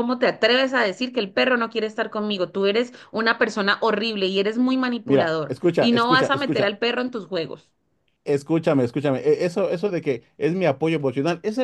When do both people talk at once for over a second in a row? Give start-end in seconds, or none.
5.0-6.8